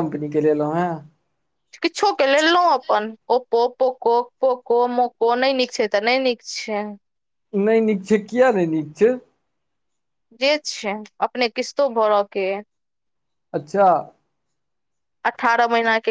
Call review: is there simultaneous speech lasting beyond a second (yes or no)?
no